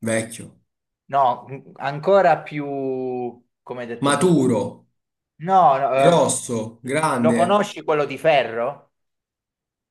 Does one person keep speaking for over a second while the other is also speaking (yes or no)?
no